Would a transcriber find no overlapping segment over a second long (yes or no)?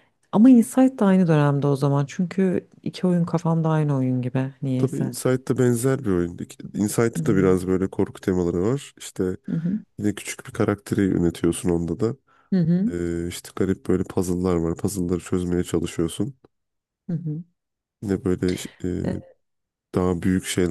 yes